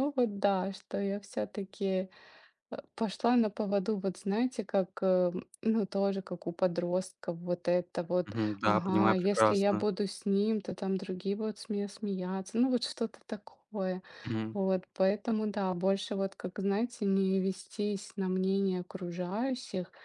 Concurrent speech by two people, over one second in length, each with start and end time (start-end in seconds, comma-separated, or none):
8.2-9.9